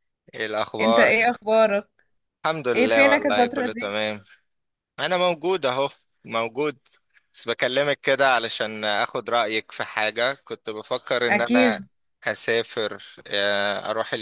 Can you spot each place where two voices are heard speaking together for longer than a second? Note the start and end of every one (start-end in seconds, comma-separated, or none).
2.7-3.9